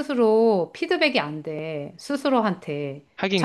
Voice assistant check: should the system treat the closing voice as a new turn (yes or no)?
no